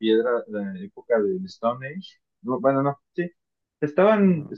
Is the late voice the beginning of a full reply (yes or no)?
no